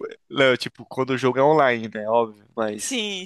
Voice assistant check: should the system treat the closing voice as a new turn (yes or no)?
no